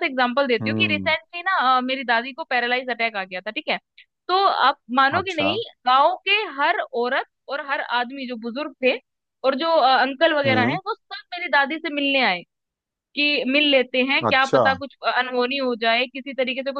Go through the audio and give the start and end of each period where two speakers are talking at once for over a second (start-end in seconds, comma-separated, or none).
none